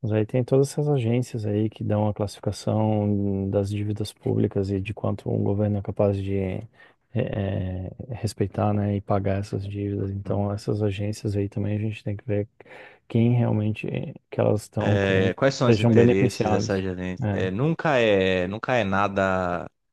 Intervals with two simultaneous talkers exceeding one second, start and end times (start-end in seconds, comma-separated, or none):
14.9-17.4